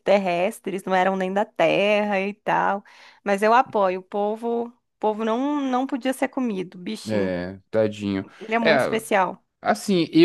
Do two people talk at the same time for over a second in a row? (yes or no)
no